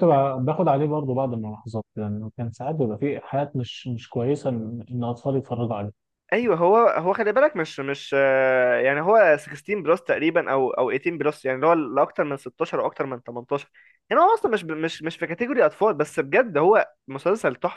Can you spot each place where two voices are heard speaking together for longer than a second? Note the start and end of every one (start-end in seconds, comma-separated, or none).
none